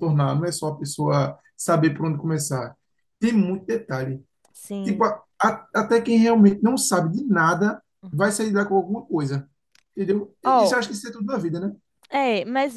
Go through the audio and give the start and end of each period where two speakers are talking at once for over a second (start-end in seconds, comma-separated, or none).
none